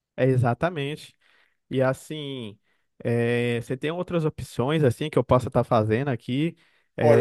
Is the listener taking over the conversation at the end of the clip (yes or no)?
yes